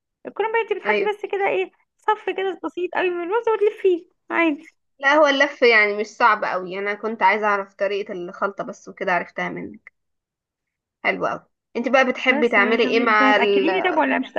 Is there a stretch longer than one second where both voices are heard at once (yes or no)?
yes